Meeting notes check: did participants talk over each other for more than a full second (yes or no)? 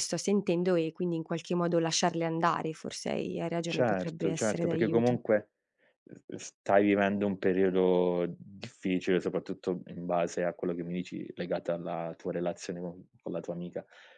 yes